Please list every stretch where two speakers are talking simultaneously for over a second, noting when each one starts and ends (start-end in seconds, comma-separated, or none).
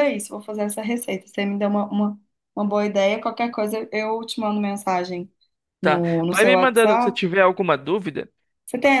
5.8-7.2